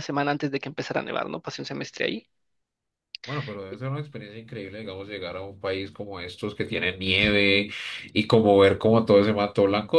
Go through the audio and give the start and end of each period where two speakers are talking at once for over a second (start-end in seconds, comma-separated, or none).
none